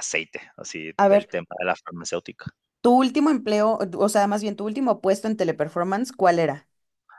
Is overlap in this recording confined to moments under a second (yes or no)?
yes